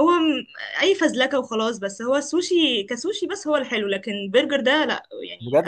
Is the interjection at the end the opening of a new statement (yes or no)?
yes